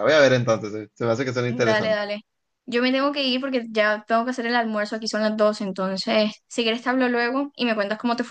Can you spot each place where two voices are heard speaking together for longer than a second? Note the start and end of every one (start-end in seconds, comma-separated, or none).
none